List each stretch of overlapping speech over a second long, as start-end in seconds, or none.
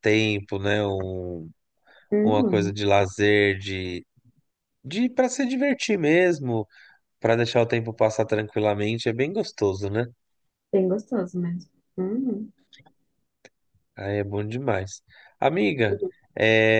none